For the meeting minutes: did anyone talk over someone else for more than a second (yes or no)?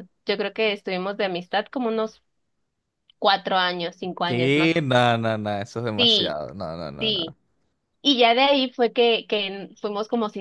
no